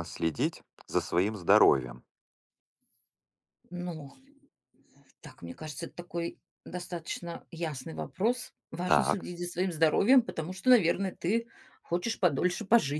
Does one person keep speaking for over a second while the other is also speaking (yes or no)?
no